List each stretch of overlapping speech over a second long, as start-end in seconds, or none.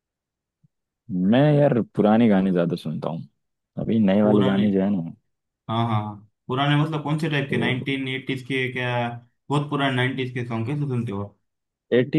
none